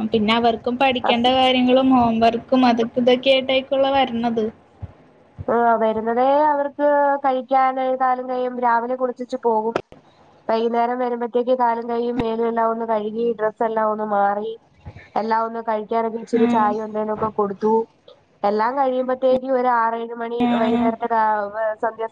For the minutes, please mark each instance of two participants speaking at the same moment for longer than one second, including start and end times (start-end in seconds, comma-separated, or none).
none